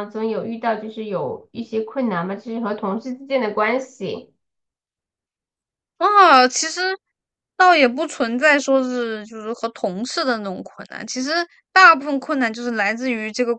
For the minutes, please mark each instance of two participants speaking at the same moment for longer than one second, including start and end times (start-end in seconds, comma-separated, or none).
none